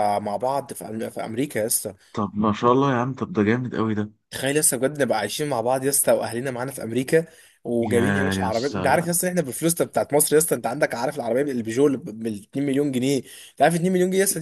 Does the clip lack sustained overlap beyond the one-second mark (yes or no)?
no